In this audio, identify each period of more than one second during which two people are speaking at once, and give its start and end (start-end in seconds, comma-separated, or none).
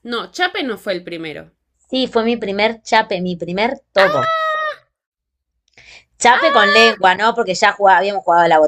none